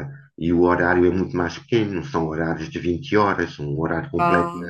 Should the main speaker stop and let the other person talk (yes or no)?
no